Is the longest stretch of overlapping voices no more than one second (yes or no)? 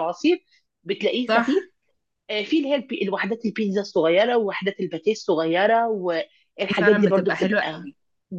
no